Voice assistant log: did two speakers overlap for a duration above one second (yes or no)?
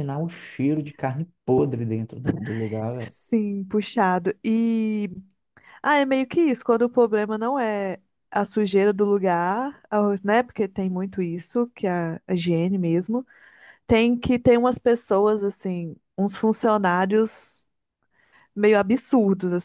no